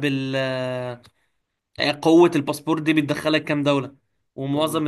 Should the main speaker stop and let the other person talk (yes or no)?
no